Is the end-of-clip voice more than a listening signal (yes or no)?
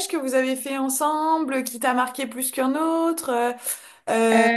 no